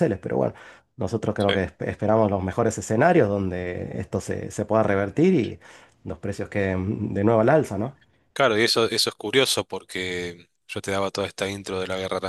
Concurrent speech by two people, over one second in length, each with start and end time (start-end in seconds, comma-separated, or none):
none